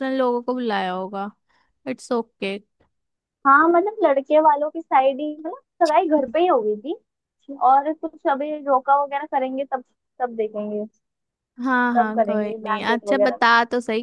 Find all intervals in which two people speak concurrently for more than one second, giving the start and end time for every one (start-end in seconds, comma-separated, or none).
11.9-13.5